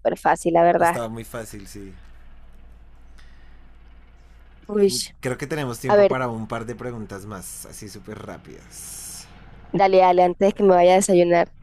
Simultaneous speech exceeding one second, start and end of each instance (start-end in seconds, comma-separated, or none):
none